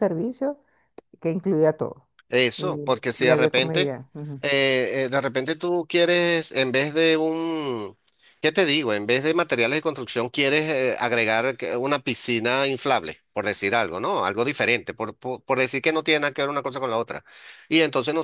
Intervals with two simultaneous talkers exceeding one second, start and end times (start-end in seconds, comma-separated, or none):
2.6-3.9